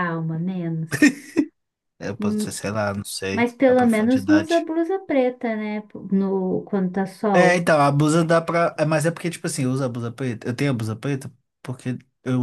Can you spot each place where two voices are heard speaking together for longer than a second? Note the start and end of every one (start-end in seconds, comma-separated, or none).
3.3-4.7